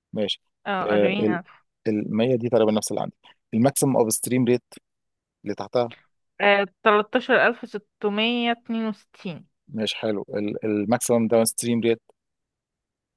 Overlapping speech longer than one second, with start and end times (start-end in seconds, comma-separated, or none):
none